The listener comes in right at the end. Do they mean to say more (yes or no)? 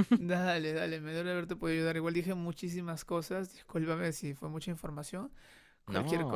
no